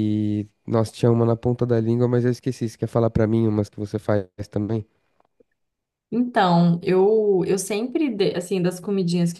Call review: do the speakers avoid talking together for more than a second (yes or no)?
yes